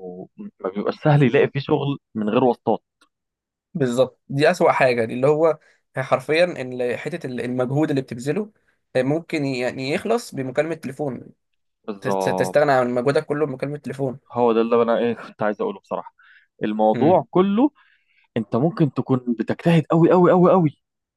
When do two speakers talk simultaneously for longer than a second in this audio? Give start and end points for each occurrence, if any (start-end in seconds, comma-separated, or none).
none